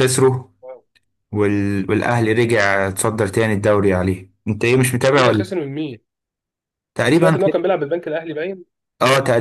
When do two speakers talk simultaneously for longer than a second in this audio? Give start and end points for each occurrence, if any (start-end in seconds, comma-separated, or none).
none